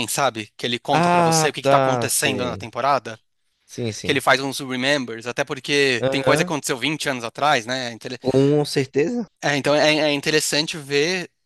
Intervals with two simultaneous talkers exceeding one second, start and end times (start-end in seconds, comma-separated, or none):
0.9-2.6